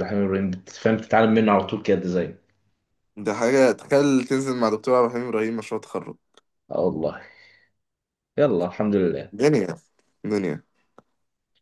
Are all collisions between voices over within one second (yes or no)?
yes